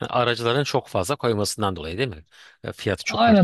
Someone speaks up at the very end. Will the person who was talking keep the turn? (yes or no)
no